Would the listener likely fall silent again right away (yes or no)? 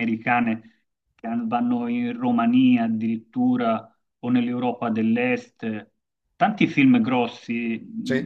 yes